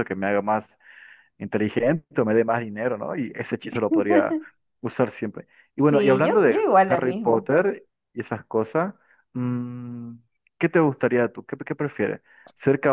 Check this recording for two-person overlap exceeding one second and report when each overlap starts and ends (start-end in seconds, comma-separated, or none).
5.8-7.5